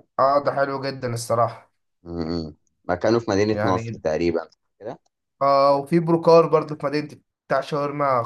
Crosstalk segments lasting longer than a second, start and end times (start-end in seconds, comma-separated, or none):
none